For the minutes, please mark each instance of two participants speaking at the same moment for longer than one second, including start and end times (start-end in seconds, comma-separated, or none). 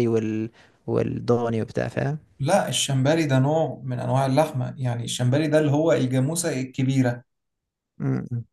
none